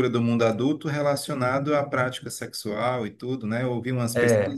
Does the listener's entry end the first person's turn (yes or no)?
no